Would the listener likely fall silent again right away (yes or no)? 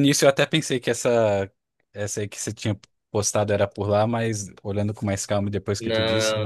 no